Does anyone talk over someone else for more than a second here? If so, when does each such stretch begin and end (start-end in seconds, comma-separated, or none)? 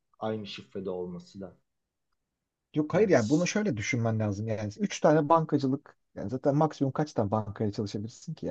none